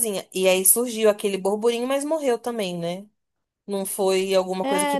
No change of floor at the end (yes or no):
no